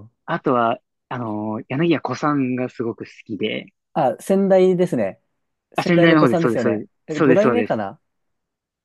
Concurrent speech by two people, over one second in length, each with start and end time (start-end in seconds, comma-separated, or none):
5.8-7.8